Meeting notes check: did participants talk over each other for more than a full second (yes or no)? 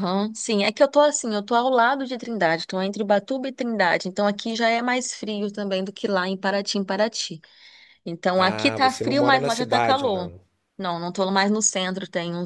yes